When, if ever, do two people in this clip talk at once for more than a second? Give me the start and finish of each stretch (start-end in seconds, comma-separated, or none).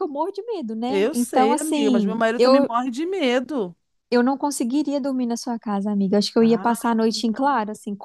0.9-2.7